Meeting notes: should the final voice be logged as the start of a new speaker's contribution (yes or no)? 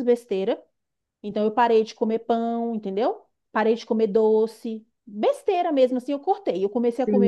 yes